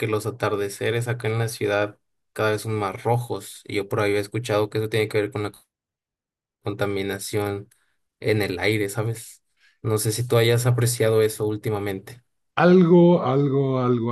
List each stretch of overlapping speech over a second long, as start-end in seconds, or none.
none